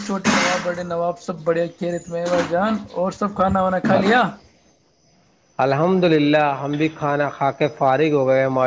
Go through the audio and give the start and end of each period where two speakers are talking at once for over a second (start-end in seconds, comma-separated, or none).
none